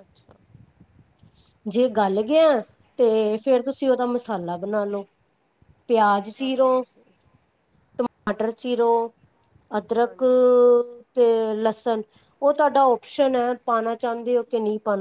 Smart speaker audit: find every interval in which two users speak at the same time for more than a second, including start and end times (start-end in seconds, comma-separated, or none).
none